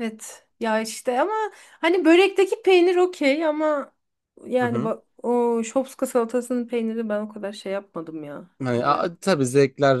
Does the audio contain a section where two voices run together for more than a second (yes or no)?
no